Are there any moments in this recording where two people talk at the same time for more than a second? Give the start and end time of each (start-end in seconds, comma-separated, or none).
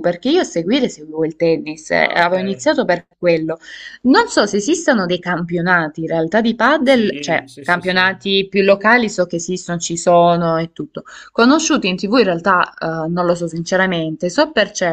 6.8-8.1